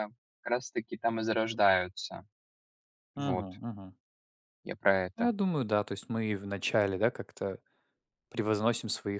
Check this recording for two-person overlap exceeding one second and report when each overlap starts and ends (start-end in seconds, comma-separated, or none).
none